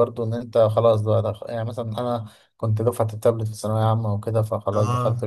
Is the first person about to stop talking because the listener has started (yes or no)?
no